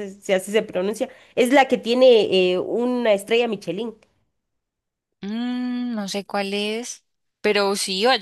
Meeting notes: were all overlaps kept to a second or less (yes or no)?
yes